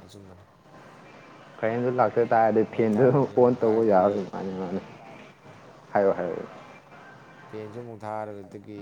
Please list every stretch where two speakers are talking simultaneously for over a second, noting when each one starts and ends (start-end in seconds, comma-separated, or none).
2.7-4.3